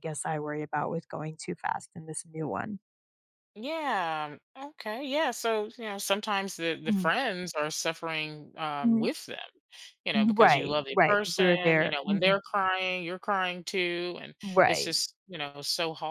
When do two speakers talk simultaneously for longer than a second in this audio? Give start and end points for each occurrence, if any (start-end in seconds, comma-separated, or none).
10.1-12.4